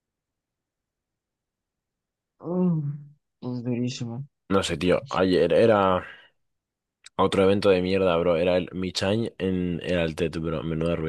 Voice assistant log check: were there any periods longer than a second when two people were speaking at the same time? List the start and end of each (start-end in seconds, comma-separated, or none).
none